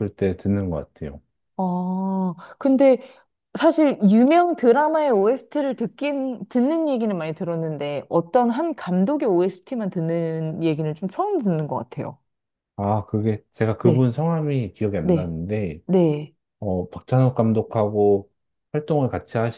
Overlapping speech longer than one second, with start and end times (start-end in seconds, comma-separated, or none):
none